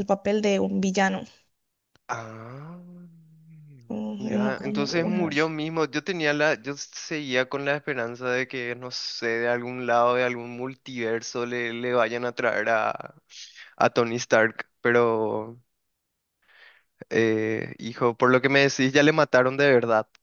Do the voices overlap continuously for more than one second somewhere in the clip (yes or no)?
yes